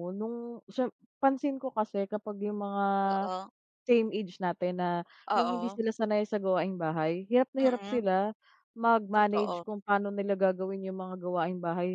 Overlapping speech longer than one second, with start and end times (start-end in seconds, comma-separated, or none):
none